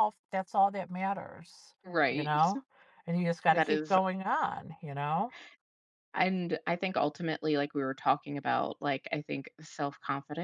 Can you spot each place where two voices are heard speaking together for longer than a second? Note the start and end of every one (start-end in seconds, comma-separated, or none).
none